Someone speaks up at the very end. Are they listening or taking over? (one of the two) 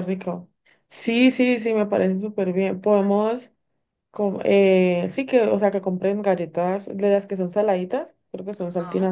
listening